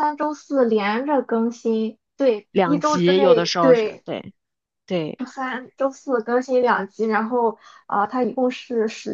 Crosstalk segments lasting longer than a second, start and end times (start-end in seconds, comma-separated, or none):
2.5-4.0